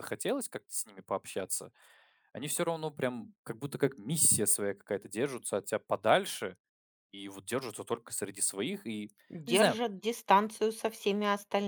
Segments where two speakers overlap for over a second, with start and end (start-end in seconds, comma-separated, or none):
none